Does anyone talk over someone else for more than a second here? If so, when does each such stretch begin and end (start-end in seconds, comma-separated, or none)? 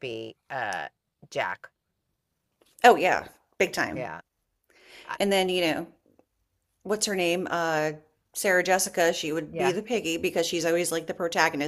none